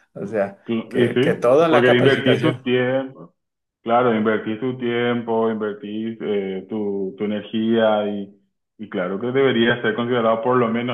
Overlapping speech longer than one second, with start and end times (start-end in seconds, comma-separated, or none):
0.7-2.7